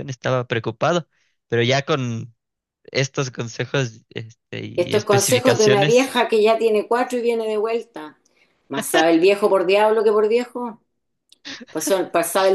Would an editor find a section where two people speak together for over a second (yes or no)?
yes